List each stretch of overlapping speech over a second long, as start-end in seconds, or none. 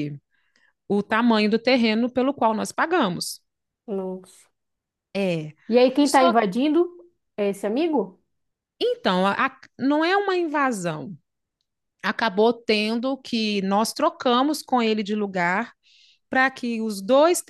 none